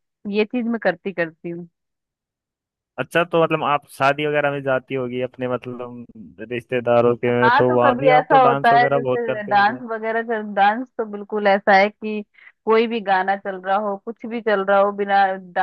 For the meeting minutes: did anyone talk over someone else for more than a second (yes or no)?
yes